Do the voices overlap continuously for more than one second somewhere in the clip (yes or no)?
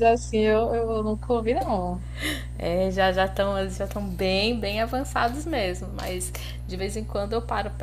no